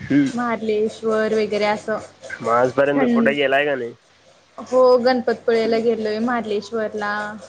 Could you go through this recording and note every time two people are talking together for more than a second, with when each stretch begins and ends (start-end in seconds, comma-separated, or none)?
none